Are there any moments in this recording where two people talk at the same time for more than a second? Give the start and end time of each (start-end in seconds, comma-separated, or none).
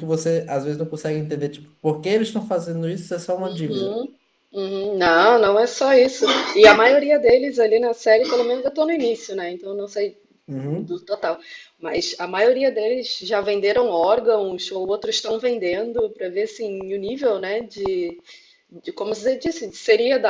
none